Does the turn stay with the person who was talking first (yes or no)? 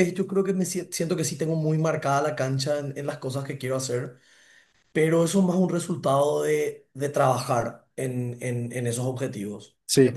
yes